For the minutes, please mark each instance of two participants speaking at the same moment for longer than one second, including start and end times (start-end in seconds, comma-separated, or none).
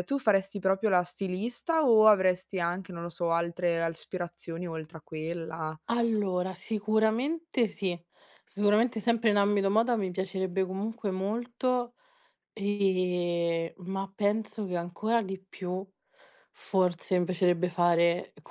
none